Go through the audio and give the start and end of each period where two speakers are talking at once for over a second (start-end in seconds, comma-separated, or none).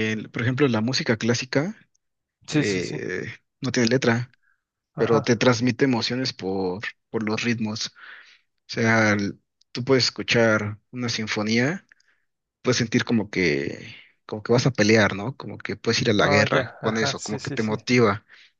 16.2-17.8